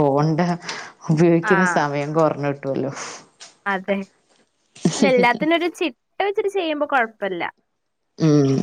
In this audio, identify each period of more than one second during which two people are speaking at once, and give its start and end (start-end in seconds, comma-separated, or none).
none